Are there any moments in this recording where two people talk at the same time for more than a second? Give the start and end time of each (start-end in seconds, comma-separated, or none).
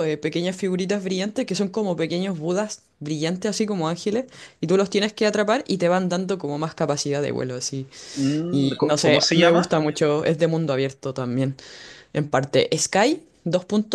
8.5-9.7